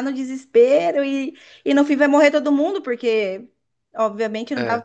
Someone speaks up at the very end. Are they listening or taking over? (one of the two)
listening